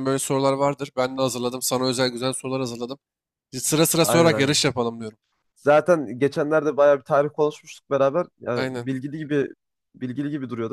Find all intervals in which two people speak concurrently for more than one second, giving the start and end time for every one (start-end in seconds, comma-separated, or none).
none